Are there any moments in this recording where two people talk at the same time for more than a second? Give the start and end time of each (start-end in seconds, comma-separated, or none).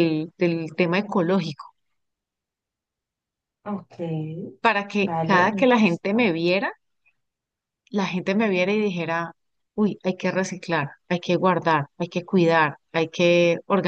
5.0-6.3